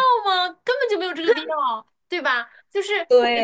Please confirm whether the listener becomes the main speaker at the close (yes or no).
no